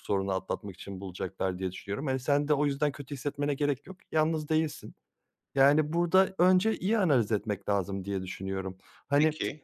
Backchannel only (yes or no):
yes